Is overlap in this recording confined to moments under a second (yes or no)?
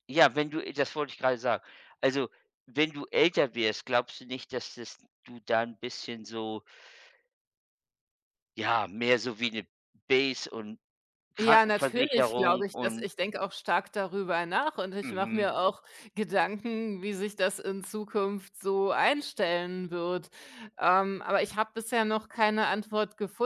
no